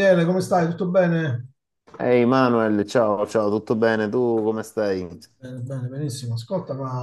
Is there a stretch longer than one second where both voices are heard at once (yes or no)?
no